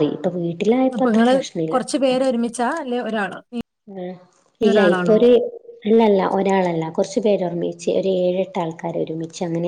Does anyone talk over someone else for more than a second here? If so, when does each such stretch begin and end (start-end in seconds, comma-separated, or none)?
none